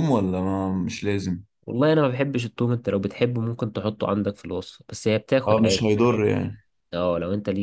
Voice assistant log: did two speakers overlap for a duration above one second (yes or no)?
no